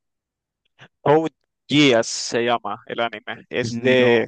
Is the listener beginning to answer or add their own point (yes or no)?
no